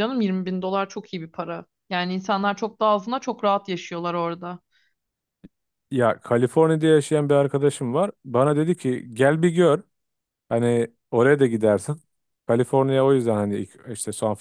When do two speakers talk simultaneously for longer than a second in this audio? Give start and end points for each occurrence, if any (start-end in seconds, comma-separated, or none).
none